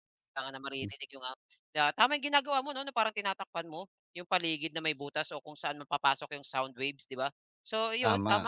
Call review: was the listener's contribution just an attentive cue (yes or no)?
yes